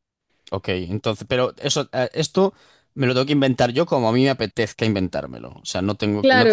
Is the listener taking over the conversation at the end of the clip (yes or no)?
yes